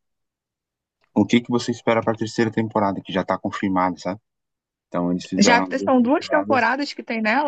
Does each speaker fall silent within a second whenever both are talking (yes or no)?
no